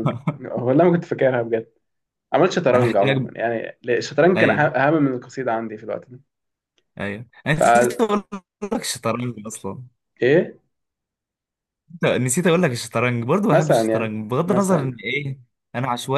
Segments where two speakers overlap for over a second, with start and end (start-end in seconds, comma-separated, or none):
13.5-15.0